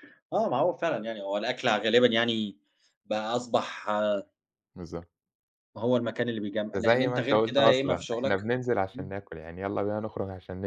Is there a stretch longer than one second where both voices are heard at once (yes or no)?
yes